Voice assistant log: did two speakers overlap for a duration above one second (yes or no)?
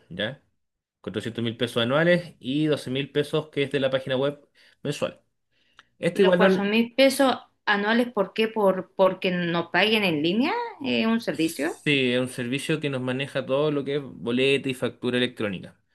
no